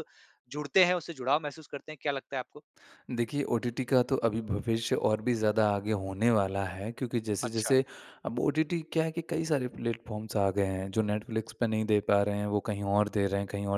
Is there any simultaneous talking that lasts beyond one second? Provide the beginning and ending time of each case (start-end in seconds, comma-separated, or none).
none